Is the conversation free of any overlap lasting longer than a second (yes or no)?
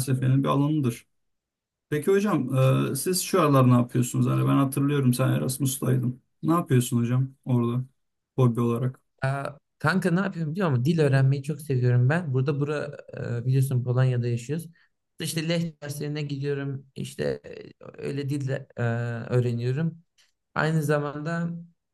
yes